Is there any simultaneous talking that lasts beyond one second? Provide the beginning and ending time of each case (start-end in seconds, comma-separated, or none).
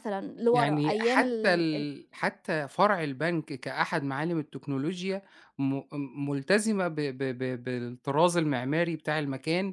0.5-1.9